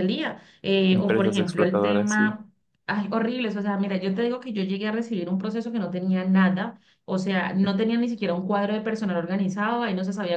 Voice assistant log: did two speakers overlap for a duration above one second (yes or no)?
yes